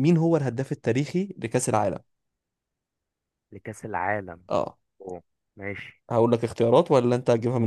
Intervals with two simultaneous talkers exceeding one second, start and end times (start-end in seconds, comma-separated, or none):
none